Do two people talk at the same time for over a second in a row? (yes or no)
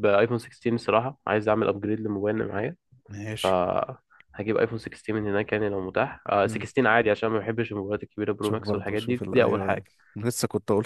yes